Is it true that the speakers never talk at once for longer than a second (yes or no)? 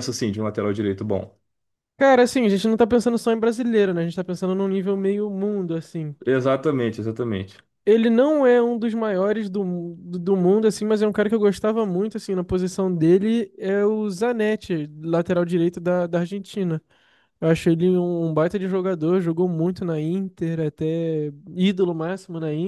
yes